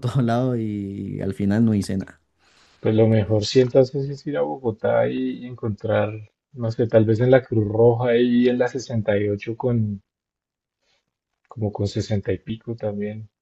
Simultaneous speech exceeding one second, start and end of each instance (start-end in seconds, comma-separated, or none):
none